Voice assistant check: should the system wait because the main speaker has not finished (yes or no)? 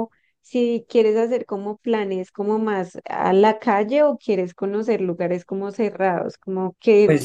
no